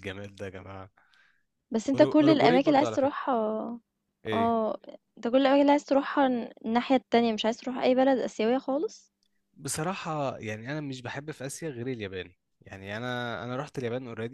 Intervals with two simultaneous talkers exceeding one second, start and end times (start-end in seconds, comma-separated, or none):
1.9-3.1